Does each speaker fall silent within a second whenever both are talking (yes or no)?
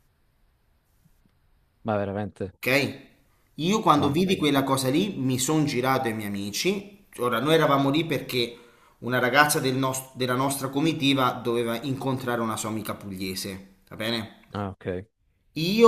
yes